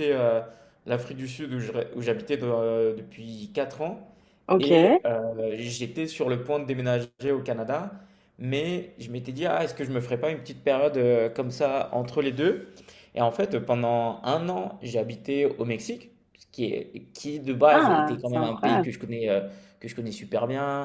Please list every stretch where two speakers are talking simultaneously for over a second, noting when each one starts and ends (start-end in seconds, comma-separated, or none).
17.7-18.9